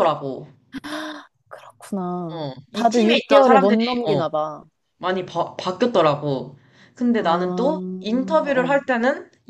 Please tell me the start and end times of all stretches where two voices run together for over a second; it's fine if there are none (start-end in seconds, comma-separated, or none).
2.3-4.2